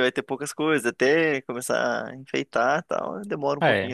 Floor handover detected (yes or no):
yes